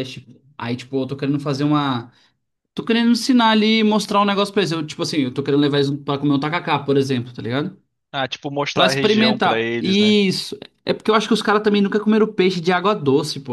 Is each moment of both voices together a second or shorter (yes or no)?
no